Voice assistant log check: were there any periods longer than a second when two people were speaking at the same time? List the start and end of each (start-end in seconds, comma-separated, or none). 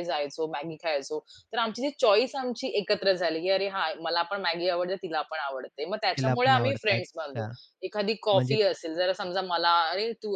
6.2-7.5